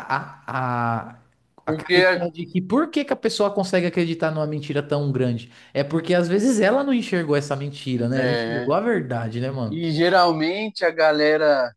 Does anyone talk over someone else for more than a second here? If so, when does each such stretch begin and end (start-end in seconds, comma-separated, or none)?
none